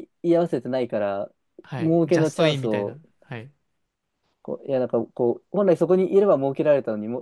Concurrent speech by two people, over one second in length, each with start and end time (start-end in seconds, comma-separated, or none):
1.8-3.0